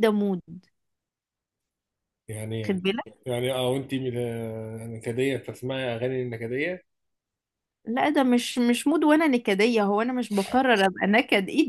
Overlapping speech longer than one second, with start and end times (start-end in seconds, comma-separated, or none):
none